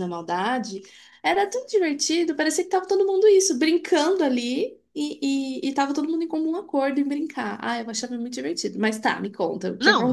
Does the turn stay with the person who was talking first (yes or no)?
no